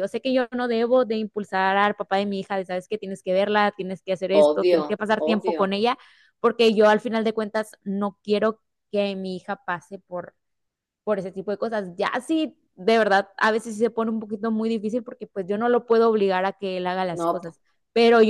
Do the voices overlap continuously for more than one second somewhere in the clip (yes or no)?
yes